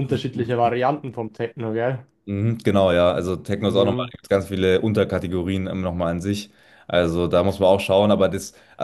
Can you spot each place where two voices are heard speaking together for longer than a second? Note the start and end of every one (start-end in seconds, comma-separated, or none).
none